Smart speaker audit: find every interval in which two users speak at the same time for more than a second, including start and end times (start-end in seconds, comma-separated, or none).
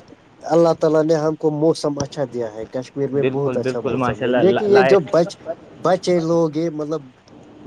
3.2-5.0